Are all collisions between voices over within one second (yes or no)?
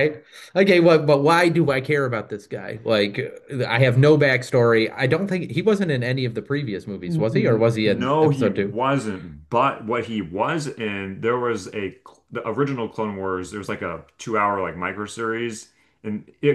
no